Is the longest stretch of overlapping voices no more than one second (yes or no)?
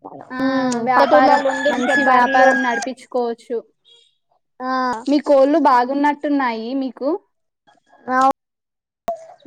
no